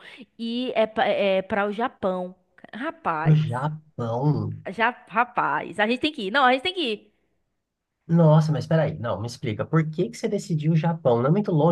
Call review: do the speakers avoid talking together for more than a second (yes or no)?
yes